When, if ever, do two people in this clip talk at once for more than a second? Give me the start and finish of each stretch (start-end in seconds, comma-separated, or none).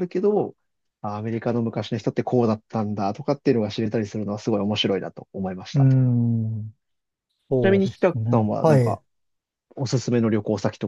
7.6-9.0